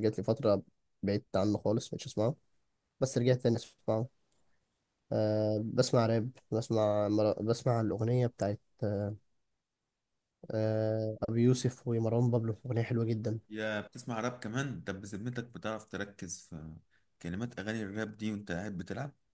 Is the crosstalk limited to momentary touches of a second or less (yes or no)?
yes